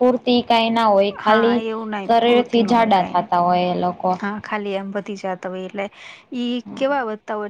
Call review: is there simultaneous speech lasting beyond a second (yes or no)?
yes